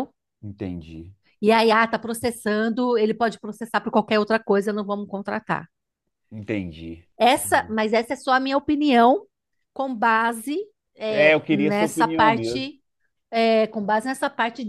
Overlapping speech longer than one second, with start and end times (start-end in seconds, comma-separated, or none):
11.1-12.7